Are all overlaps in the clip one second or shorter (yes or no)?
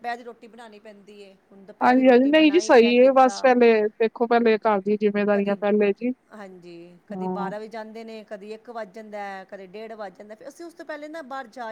yes